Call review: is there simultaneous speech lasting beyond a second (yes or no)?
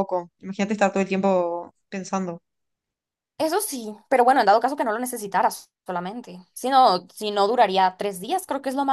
no